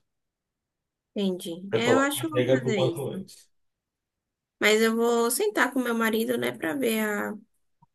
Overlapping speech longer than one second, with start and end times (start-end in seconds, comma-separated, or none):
1.7-3.3